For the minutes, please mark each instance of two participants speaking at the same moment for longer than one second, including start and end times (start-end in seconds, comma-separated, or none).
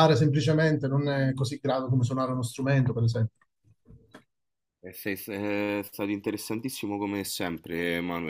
none